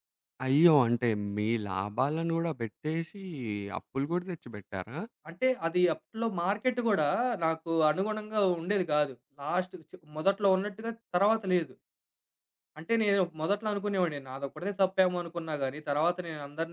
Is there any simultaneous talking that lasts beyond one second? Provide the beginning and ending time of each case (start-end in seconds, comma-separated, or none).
none